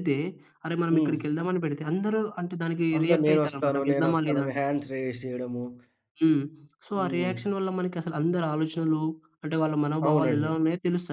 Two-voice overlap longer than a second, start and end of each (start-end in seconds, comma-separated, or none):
3.0-4.7